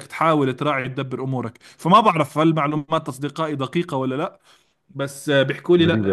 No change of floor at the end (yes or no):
yes